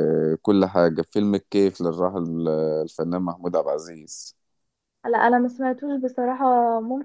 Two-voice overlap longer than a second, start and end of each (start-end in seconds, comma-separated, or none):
none